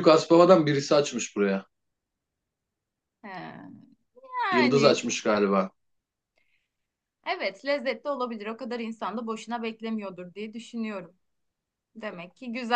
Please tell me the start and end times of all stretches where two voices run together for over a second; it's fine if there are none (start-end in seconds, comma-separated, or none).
none